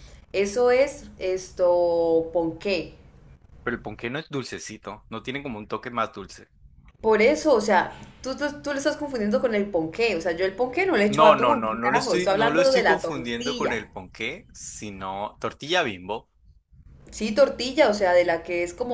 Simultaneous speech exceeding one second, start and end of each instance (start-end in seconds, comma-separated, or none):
11.1-13.8